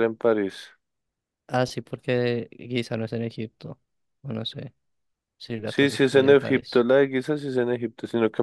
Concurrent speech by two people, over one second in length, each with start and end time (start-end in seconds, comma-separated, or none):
5.7-6.9